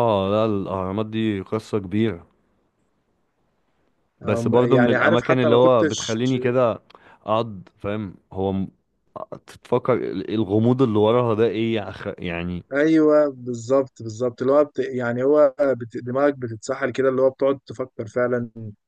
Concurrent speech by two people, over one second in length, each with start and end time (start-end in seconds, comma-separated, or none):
4.2-6.2